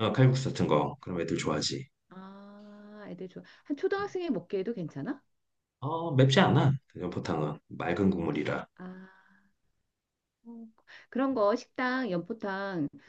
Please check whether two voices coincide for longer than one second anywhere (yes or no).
no